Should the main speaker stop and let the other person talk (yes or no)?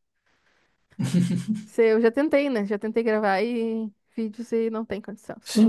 yes